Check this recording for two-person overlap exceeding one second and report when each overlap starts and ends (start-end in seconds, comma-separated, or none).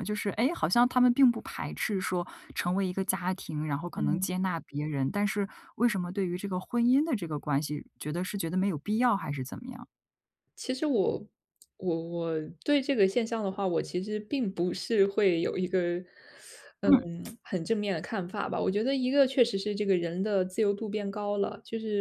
none